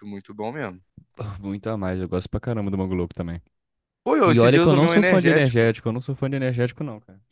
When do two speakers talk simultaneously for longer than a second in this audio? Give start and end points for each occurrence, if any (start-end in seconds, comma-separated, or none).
4.2-5.7